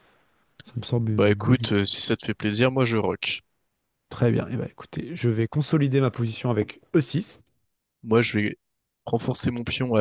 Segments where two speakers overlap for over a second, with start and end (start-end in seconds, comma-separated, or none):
none